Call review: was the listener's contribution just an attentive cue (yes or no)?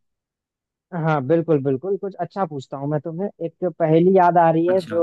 yes